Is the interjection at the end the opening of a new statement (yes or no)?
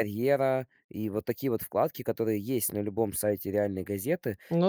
no